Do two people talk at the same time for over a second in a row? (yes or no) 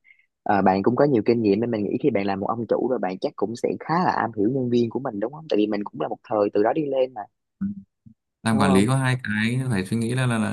no